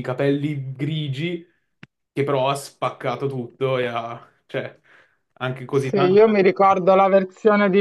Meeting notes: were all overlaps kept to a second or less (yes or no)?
yes